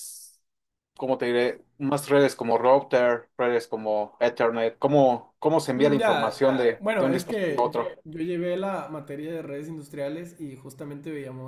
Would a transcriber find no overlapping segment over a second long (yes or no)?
no